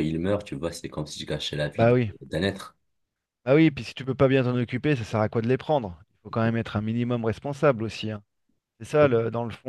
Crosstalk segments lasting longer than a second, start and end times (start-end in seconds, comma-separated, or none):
none